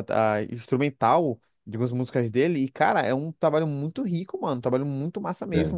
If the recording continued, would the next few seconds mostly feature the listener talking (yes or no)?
no